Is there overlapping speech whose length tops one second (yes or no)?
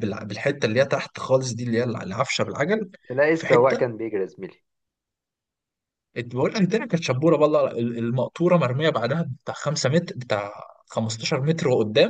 no